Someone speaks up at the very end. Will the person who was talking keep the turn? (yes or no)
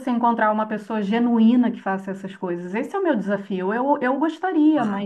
yes